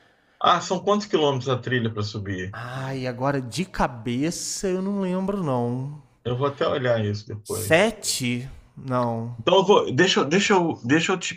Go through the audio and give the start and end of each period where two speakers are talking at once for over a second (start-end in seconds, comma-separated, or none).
none